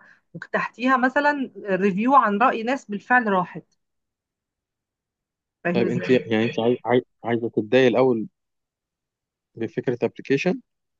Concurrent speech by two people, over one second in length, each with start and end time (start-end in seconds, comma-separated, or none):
none